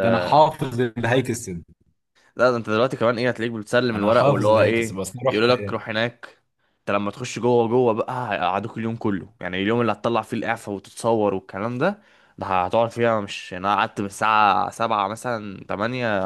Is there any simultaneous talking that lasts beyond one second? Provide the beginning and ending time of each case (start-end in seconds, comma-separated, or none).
3.9-5.5